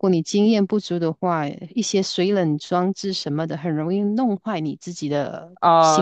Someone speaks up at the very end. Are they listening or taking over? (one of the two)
taking over